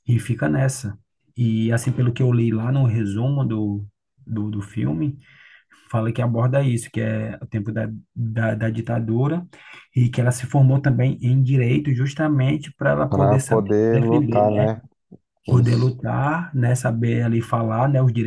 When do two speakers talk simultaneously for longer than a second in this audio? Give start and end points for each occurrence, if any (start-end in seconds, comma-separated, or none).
13.1-14.7